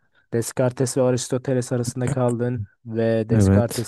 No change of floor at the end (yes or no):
yes